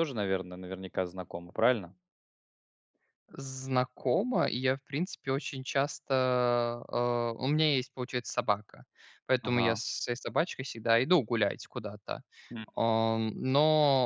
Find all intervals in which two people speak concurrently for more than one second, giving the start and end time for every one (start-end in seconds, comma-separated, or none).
none